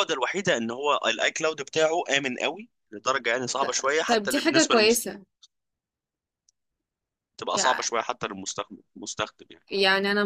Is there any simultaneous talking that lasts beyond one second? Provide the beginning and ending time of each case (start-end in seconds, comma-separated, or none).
3.6-5.0